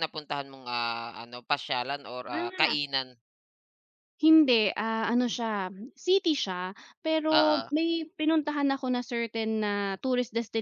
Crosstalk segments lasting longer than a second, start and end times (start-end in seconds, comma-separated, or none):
none